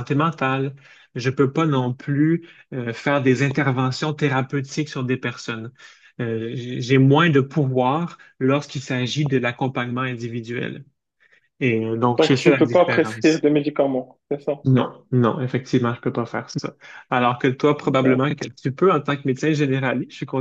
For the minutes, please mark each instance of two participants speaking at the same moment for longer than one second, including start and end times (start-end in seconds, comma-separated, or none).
12.2-13.4